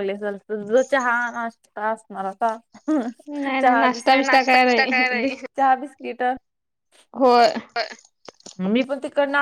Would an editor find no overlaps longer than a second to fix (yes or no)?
no